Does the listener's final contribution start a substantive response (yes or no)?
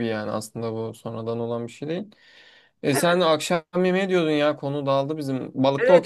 yes